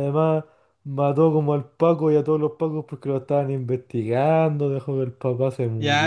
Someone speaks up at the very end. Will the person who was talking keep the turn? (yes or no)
no